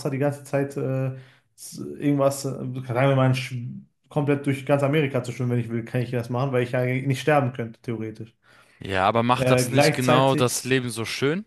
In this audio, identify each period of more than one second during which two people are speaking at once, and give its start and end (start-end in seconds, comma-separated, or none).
9.3-10.6